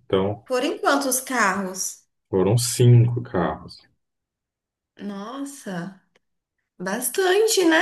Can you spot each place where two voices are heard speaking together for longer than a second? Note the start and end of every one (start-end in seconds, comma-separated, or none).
none